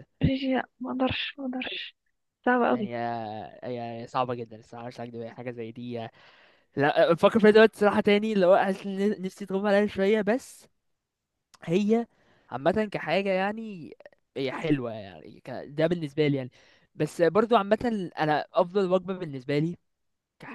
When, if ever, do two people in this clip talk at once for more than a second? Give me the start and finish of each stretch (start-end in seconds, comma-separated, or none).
none